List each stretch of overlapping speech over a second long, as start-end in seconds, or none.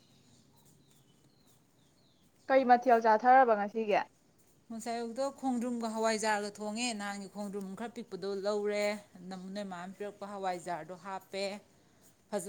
none